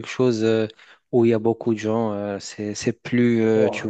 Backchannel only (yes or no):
no